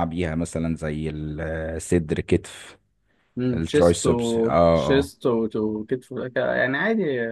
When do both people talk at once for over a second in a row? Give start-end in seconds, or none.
3.5-5.1